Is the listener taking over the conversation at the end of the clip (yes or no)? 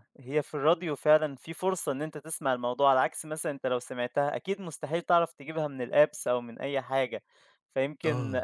no